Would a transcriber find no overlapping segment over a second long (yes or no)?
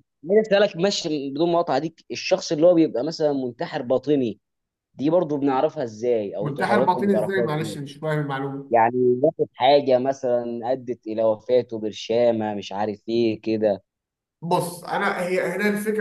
no